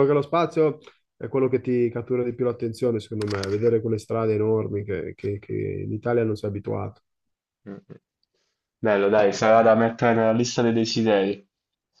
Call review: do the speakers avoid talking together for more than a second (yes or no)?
yes